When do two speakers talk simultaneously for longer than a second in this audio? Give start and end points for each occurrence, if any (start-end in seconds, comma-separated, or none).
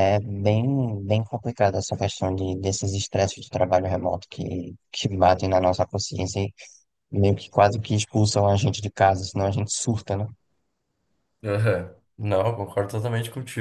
none